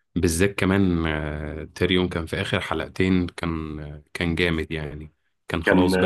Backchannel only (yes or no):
yes